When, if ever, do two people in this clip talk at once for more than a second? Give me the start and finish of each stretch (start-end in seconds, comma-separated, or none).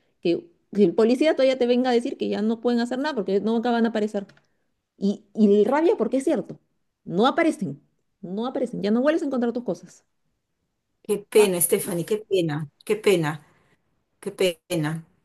none